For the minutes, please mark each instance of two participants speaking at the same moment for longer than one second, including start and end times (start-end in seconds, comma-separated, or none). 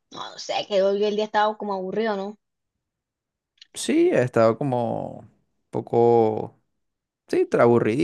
none